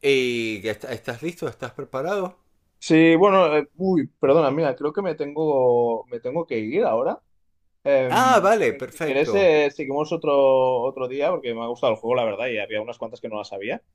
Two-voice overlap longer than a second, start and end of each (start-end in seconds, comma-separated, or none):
8.1-9.5